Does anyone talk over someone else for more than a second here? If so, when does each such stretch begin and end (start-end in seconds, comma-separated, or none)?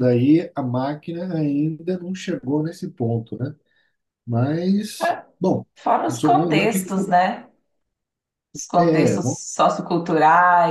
6.1-7.3